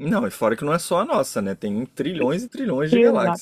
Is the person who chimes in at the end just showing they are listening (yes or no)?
no